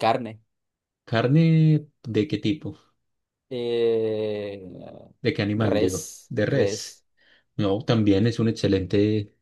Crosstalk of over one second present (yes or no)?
yes